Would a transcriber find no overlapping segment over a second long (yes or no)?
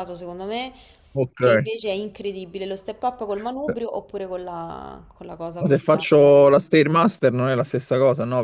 yes